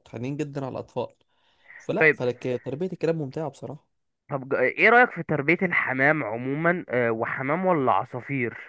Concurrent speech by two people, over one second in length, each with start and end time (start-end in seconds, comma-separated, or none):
none